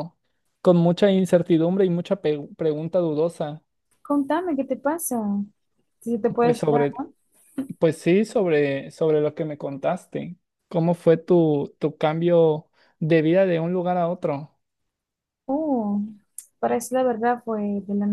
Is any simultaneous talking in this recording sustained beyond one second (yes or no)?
no